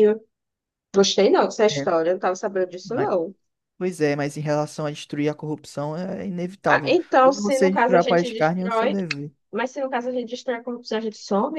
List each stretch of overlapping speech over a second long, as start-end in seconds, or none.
6.7-9.0